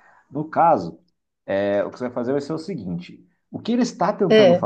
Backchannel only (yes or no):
yes